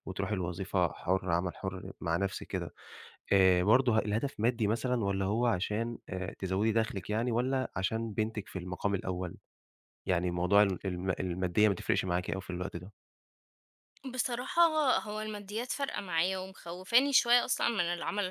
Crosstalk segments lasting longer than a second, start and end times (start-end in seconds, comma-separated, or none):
none